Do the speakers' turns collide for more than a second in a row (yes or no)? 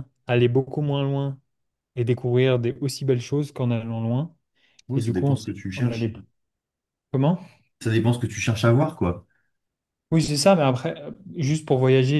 yes